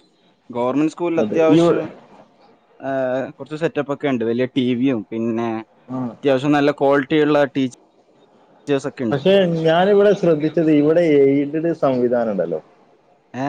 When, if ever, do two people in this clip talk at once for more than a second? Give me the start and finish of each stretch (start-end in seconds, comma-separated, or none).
none